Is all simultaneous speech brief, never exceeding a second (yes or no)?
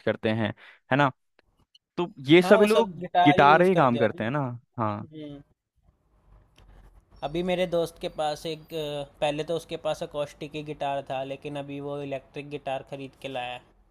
no